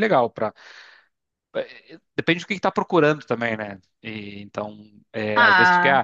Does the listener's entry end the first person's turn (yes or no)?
no